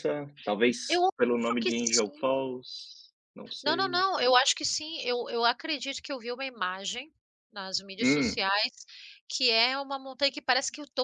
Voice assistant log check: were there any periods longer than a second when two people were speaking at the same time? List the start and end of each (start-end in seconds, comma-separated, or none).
0.9-2.3